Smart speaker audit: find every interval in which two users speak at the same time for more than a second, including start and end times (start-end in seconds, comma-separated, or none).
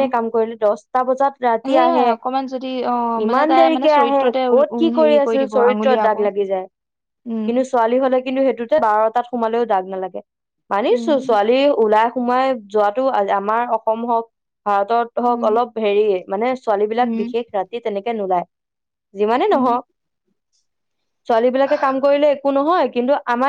3.2-6.1